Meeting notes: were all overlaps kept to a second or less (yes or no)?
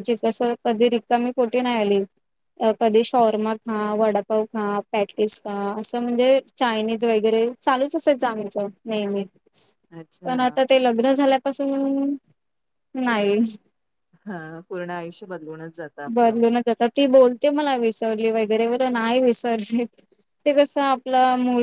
yes